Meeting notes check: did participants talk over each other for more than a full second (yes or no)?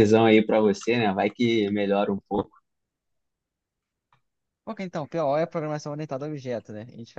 no